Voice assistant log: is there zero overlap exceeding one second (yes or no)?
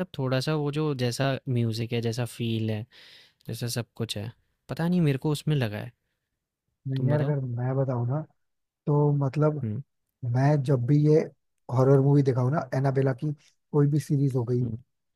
yes